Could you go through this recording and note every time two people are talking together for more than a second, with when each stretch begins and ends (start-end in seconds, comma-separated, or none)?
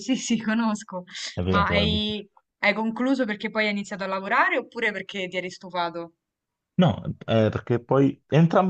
none